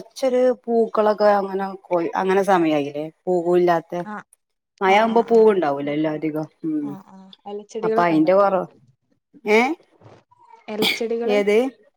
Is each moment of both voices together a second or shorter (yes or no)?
yes